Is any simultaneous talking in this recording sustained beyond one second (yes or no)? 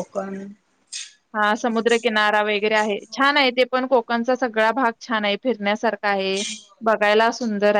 yes